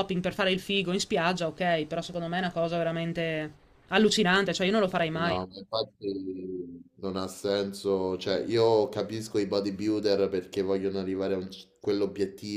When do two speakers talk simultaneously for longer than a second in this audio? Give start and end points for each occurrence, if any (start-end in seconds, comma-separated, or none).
none